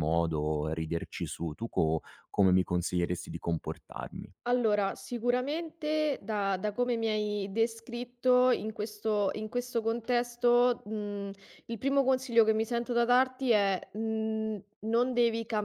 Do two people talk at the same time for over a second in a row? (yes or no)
no